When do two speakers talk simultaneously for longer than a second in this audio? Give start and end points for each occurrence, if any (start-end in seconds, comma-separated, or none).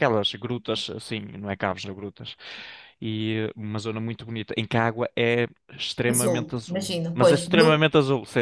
6.1-7.8